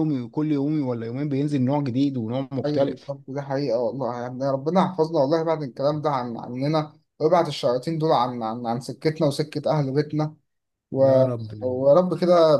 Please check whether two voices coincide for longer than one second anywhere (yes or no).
no